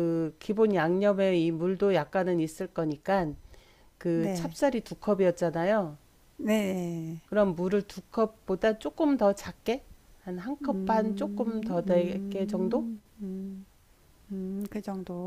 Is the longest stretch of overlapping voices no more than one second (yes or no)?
no